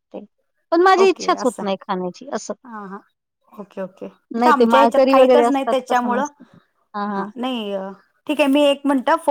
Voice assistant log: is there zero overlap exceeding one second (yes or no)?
no